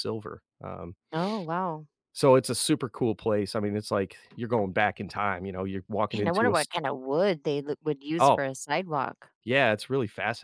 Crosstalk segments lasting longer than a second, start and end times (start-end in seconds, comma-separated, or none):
none